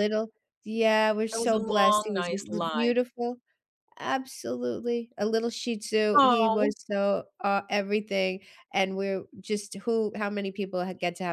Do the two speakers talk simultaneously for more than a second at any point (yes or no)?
yes